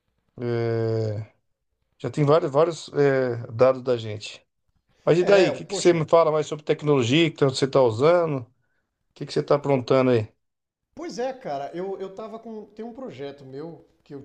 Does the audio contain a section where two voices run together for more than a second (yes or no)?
no